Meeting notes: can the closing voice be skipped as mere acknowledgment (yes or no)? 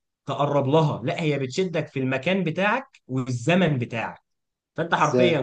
yes